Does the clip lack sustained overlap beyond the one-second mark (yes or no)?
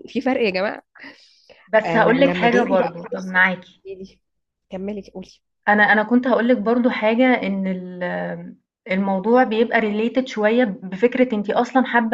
no